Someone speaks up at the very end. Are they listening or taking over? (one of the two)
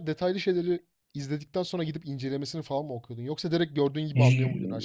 taking over